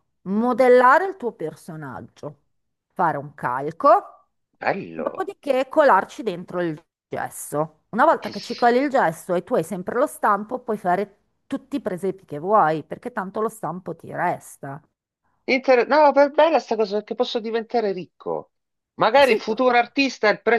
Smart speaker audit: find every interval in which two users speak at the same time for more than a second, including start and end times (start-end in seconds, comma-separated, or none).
none